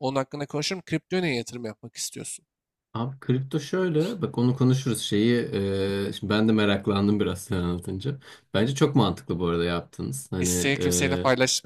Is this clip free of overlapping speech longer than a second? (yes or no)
yes